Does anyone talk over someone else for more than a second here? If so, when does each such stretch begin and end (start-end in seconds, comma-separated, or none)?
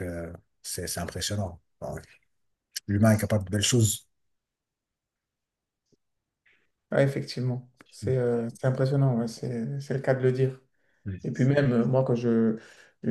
none